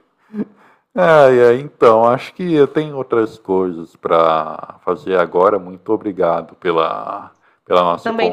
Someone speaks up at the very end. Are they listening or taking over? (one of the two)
taking over